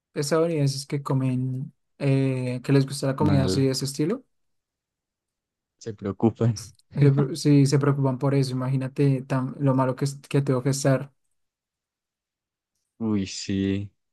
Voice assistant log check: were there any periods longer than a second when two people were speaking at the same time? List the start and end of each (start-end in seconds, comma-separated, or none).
none